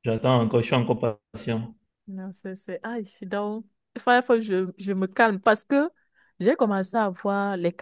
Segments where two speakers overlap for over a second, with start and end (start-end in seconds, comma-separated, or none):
none